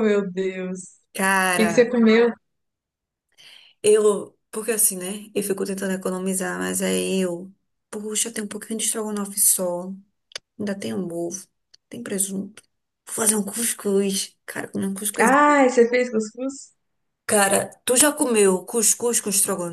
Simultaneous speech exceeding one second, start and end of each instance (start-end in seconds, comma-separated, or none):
none